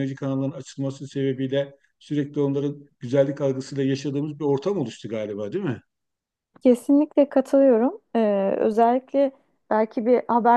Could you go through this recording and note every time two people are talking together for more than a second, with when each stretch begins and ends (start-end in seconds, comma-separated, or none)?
none